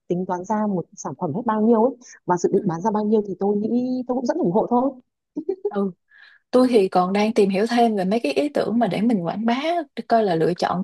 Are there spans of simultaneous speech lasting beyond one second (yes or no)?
no